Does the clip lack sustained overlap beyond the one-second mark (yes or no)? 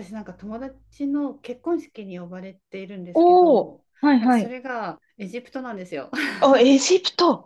no